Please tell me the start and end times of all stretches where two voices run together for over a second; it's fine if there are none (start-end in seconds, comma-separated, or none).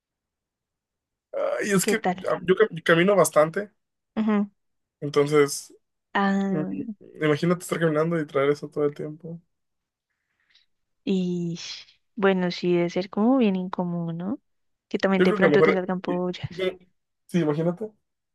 15.2-16.6